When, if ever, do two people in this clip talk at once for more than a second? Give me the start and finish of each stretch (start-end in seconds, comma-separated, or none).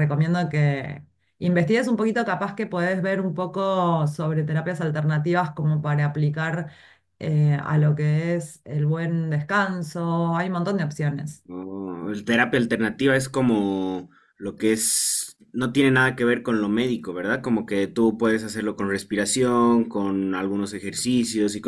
none